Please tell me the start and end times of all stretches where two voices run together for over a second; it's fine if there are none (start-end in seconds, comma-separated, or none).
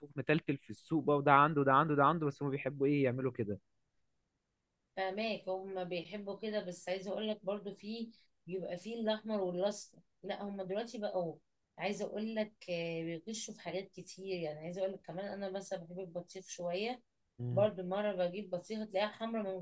none